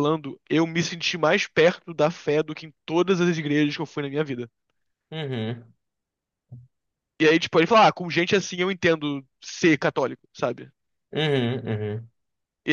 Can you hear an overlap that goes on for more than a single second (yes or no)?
no